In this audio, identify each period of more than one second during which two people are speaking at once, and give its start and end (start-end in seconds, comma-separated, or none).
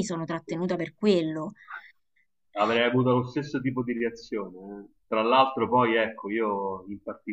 none